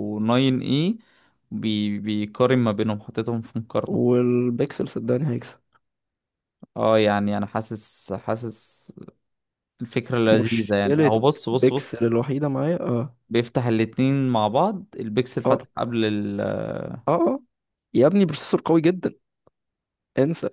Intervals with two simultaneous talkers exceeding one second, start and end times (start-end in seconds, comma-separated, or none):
10.4-12.1